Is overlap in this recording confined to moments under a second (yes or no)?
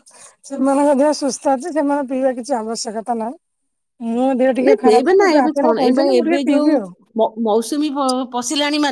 no